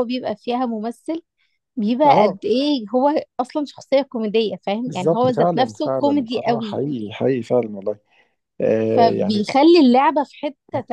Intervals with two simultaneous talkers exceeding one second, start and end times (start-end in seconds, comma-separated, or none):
4.8-6.8